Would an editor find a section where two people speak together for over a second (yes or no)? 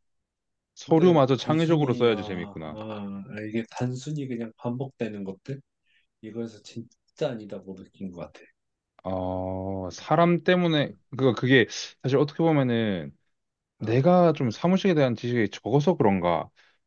yes